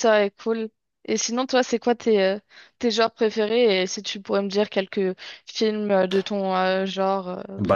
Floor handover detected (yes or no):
yes